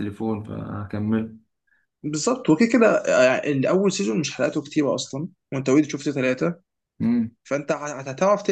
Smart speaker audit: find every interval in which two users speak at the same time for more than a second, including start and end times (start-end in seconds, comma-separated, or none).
none